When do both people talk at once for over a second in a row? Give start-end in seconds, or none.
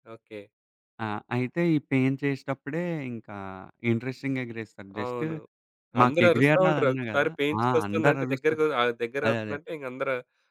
6.0-8.6